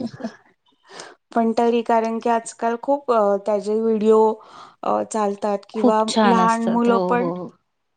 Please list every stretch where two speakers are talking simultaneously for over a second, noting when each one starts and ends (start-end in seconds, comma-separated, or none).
5.7-7.3